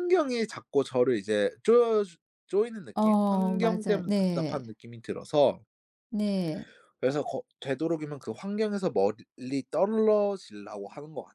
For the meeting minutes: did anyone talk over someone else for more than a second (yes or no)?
yes